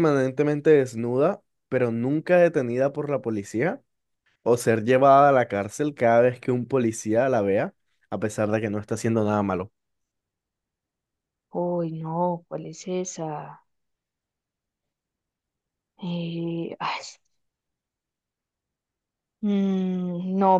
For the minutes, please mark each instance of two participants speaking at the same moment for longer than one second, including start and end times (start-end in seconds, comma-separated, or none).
none